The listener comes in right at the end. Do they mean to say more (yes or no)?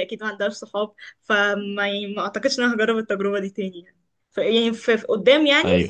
no